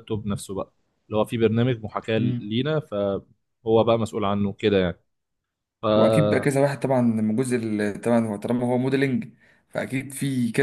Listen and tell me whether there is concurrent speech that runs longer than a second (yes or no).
no